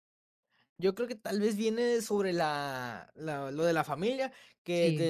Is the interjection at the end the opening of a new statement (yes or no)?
no